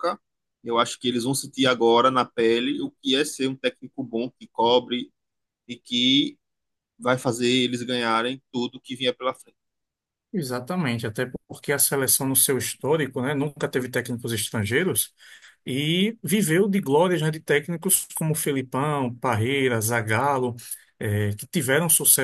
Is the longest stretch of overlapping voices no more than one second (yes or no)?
yes